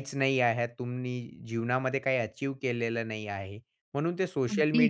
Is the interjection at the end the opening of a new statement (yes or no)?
no